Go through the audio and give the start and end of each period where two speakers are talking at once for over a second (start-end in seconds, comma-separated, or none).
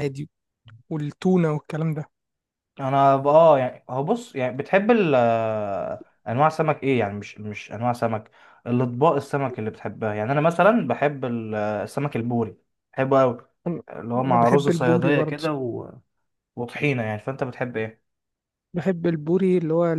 13.9-15.4